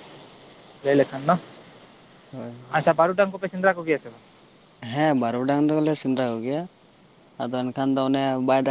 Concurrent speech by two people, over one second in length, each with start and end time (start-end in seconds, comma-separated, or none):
none